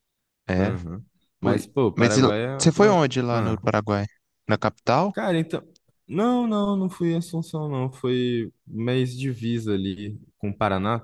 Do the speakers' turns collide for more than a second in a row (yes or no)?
yes